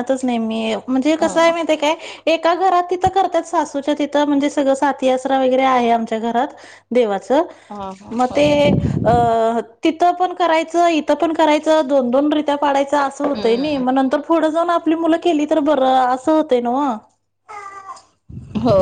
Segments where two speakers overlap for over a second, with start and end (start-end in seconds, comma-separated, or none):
none